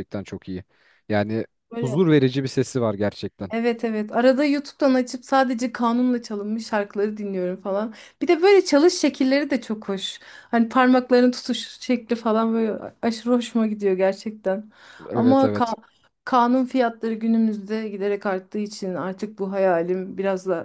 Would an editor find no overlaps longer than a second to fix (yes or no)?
yes